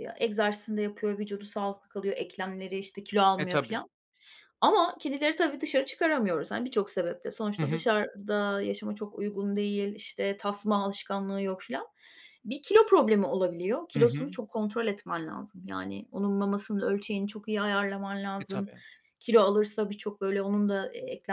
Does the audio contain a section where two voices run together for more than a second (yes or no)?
no